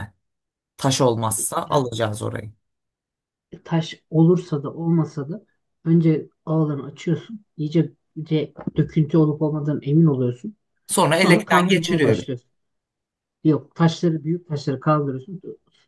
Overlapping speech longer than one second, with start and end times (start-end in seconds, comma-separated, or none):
11.2-12.4